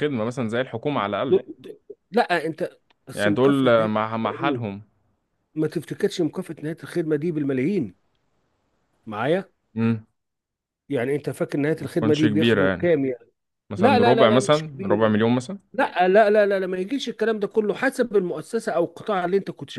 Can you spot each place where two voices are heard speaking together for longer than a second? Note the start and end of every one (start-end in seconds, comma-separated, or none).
3.1-4.6, 11.8-13.0, 13.8-15.2